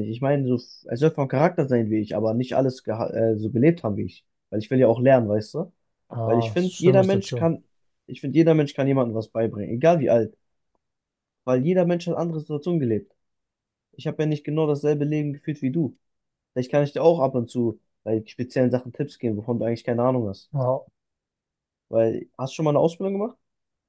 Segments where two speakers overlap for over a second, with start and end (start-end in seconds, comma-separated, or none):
6.2-7.5